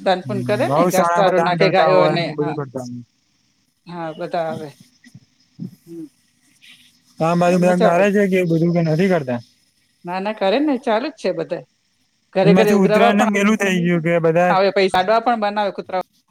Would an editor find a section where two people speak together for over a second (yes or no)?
yes